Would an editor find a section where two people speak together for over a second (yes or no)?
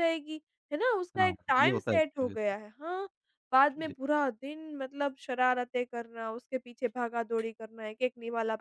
yes